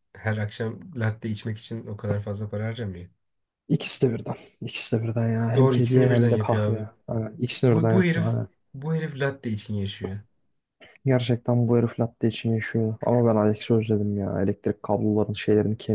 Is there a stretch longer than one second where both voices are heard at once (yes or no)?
yes